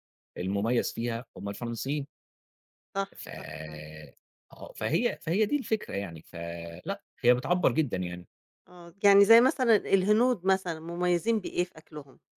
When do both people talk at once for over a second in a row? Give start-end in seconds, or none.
none